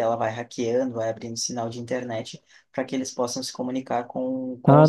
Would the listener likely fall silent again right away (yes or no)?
yes